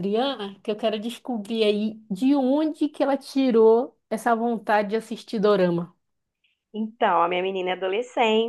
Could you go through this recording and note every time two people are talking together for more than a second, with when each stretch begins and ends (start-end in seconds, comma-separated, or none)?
none